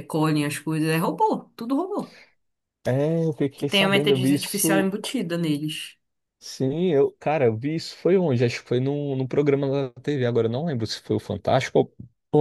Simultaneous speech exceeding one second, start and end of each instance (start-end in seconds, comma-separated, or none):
3.6-4.9